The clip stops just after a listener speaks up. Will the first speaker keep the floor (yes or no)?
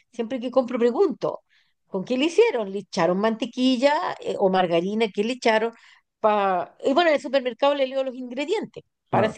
yes